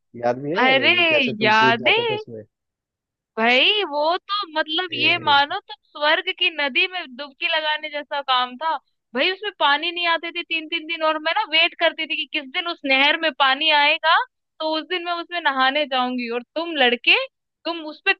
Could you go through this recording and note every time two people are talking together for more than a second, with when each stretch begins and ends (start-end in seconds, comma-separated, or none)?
none